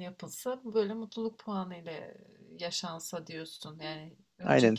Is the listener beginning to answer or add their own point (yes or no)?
no